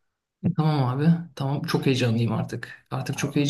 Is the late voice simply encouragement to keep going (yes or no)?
yes